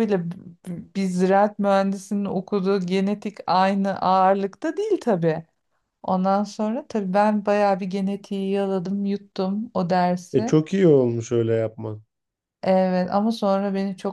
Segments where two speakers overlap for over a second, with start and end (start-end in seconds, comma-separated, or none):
none